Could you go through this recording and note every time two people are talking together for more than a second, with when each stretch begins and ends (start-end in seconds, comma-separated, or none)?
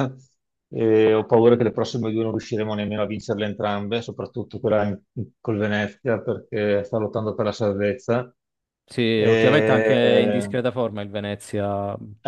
9.2-10.5